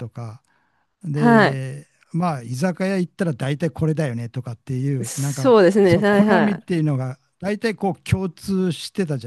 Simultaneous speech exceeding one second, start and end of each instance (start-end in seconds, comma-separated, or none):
5.0-6.7